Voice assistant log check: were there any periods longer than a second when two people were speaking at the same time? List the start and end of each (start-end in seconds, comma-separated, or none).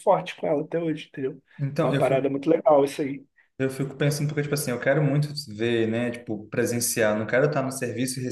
none